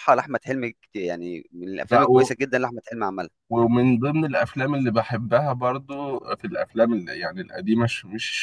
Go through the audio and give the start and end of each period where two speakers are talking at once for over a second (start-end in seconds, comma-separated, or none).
none